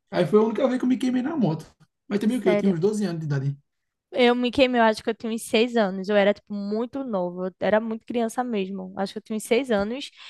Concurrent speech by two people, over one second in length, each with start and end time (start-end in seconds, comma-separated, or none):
none